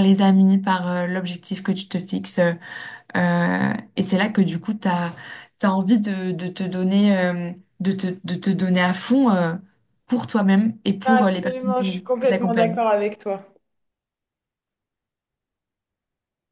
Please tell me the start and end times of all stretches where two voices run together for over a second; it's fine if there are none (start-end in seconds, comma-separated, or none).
11.1-12.8